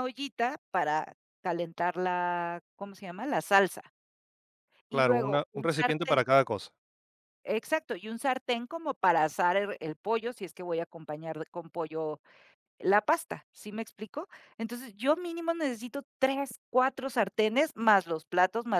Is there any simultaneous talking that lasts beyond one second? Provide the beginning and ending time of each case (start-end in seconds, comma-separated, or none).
4.9-6.2